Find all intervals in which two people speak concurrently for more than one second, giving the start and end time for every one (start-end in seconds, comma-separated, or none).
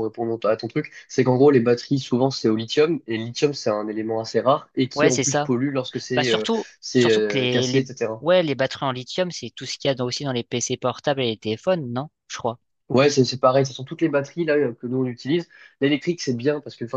6.1-8.3